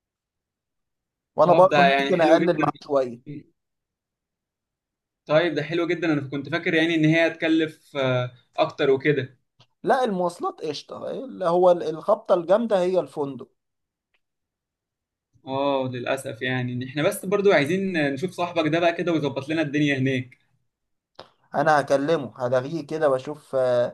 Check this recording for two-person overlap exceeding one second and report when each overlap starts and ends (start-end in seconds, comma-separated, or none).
1.4-2.9